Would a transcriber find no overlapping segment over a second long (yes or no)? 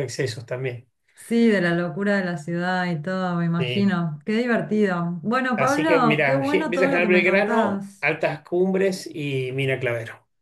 no